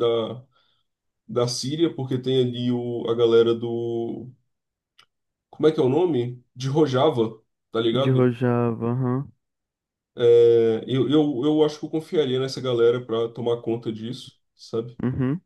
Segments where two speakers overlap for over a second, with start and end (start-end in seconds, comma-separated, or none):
none